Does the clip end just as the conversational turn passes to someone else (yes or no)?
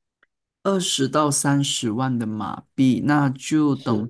no